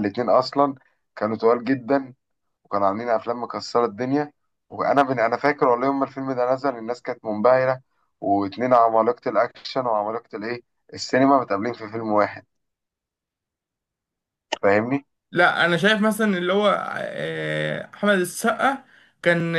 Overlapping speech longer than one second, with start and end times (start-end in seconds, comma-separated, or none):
none